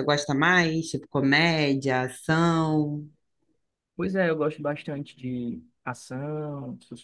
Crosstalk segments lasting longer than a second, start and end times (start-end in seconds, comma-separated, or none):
none